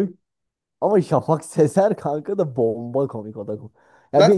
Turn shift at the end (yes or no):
no